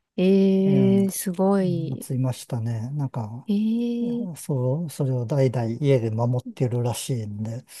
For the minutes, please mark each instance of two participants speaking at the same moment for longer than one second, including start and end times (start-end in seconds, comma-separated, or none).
none